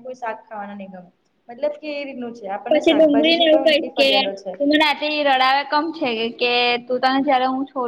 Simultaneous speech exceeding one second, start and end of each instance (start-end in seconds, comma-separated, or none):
2.7-4.1